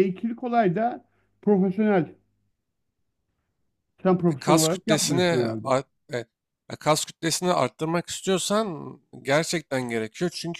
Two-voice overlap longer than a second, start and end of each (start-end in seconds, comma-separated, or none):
4.3-5.7